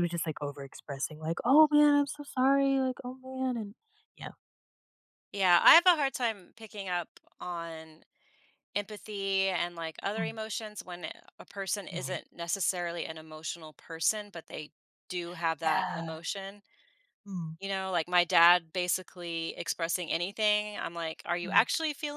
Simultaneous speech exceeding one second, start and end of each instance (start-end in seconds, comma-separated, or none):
none